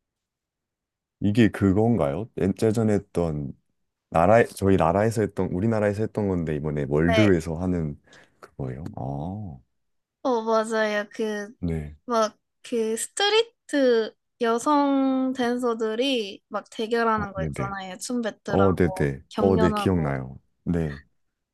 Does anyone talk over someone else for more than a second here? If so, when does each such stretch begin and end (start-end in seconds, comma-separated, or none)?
18.5-20.2